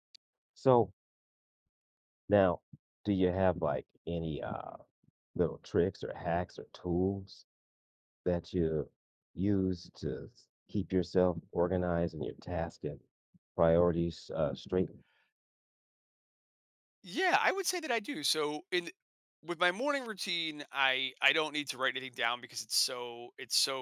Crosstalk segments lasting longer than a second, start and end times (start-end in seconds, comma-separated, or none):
none